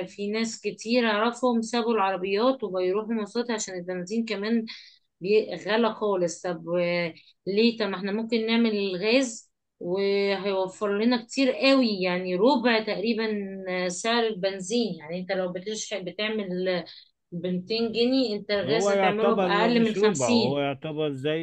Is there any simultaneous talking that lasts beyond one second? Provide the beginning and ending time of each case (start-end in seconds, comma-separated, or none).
18.6-20.6